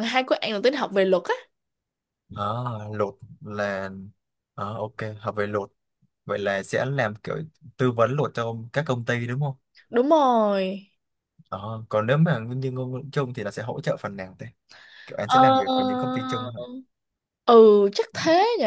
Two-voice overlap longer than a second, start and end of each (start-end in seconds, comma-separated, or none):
none